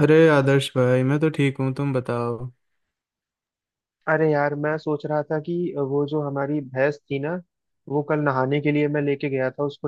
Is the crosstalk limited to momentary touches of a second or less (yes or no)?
yes